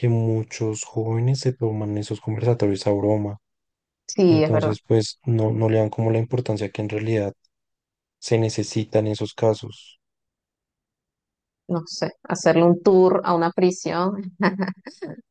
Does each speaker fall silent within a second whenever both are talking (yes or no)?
yes